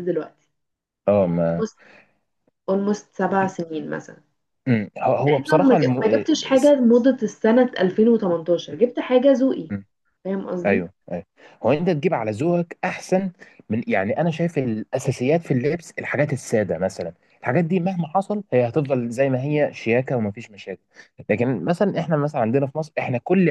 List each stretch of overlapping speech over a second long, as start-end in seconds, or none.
5.2-6.7